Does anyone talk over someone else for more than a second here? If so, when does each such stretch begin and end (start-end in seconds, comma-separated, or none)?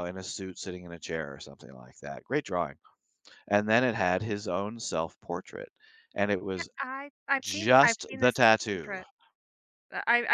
7.4-9.0